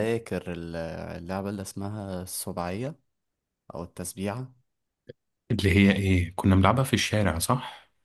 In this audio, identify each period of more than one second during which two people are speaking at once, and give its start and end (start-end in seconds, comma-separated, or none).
none